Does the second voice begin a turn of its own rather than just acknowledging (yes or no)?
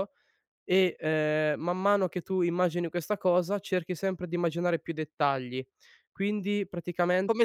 yes